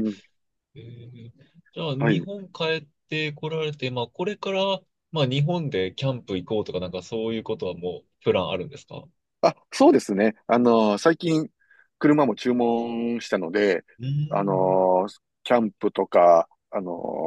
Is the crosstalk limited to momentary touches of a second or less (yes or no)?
yes